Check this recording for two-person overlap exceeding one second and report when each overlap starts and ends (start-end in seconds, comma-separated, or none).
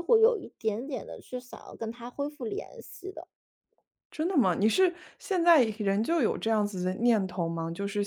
none